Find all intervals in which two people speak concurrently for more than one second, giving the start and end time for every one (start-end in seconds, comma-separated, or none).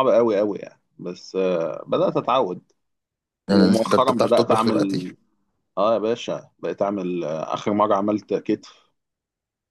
3.5-5.0